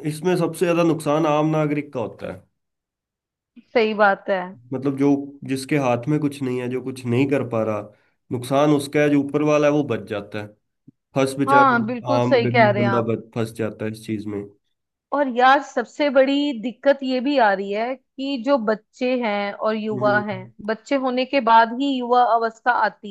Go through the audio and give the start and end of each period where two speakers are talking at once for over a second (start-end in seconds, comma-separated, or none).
11.5-13.1